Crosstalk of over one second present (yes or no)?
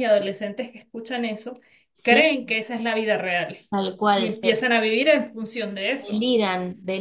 no